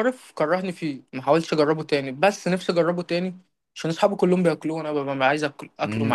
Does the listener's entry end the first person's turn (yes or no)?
yes